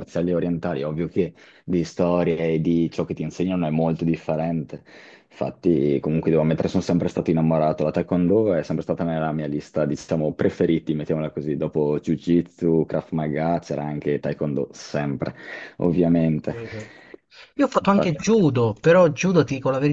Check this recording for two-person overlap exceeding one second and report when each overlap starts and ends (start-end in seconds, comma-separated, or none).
none